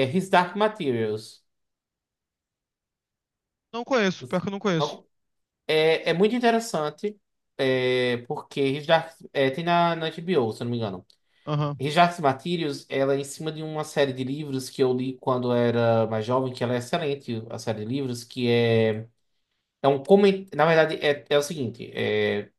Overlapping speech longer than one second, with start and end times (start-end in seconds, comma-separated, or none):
none